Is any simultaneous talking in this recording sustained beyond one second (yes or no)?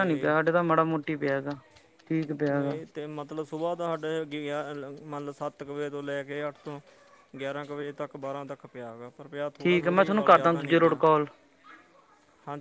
yes